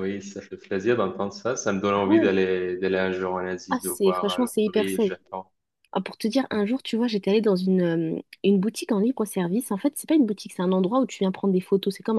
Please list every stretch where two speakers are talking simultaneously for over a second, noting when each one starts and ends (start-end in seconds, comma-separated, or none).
3.7-5.1